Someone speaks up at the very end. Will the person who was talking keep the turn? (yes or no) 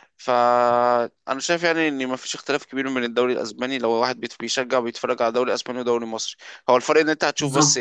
yes